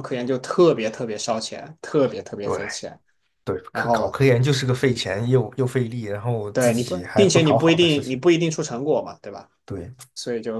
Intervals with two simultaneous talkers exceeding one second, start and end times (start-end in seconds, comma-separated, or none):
6.5-8.2